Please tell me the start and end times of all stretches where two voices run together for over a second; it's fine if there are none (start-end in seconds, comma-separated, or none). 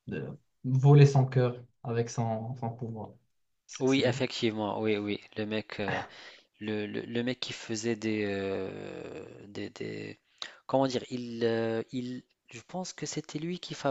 none